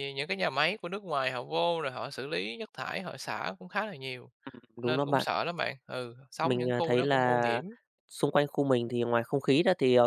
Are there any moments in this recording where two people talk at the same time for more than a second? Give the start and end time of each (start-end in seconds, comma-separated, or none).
6.4-7.6